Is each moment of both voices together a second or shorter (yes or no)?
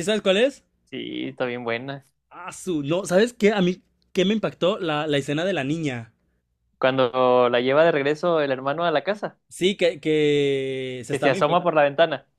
yes